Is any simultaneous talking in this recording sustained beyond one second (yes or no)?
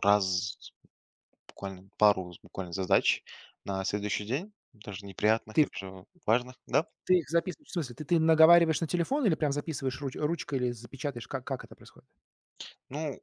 no